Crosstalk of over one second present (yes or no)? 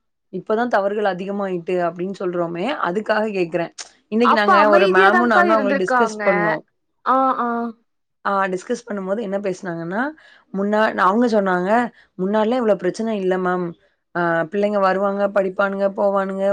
yes